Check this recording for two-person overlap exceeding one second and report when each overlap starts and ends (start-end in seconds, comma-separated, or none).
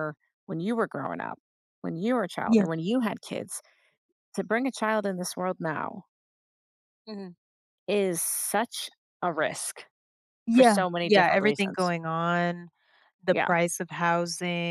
10.5-11.9